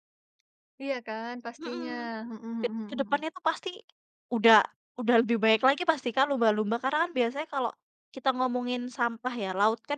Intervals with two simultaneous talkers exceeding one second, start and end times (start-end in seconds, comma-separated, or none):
none